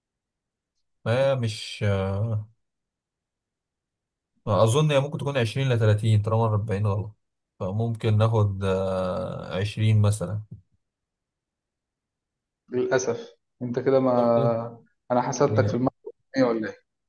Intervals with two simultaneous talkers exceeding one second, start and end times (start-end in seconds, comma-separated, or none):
none